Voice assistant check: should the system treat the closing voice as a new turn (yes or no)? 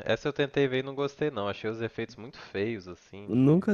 yes